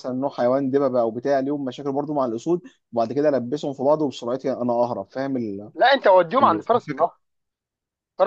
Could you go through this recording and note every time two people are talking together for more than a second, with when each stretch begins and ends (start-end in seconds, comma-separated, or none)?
none